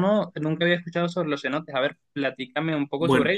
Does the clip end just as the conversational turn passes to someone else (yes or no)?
no